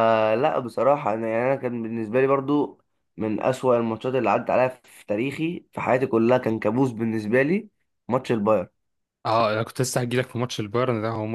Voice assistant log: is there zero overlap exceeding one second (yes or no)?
yes